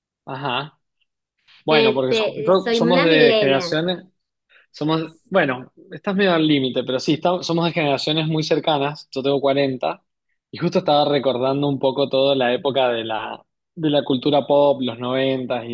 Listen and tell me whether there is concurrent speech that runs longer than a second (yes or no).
yes